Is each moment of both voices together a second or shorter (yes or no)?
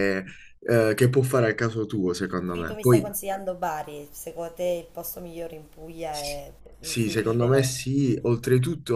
no